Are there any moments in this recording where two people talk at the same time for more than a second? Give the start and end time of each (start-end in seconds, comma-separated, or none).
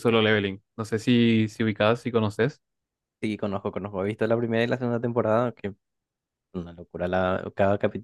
none